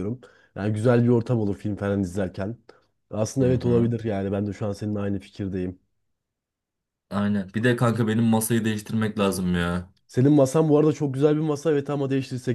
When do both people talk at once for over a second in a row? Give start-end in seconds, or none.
none